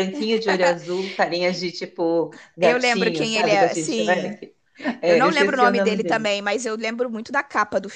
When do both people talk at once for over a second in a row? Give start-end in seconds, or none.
2.6-4.4, 5.0-6.3